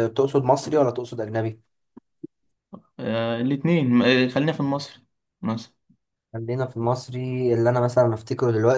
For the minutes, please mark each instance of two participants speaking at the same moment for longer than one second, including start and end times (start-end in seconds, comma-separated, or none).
none